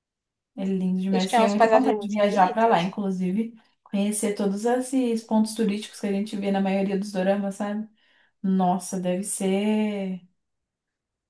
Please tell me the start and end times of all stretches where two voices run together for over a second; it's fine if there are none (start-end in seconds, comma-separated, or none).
1.1-3.0